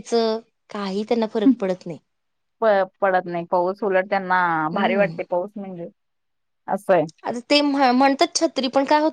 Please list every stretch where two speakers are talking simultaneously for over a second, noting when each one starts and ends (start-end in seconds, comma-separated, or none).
none